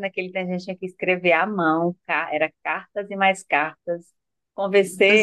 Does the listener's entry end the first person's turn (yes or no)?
no